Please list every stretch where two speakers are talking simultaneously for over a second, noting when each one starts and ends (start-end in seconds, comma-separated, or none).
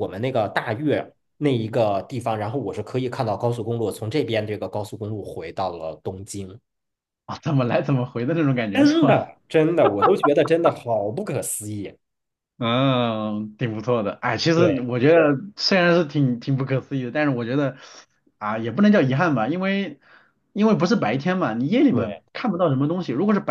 none